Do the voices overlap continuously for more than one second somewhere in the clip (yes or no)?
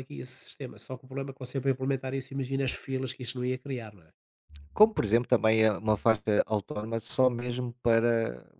no